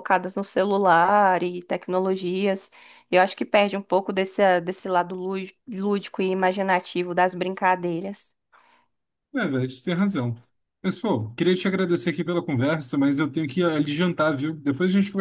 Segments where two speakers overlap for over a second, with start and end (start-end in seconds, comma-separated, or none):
none